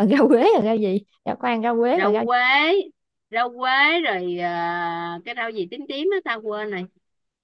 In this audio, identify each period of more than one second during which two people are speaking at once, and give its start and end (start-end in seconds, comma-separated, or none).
none